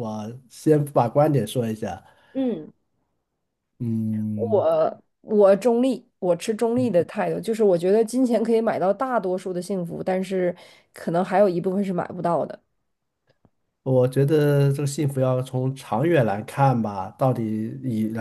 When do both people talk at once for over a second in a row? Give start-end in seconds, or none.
none